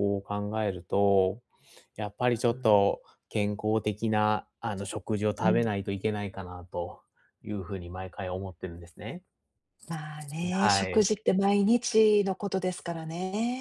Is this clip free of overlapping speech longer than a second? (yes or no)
yes